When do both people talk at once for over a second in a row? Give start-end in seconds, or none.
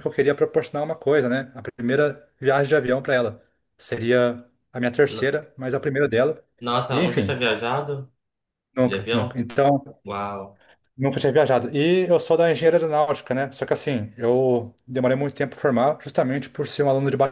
none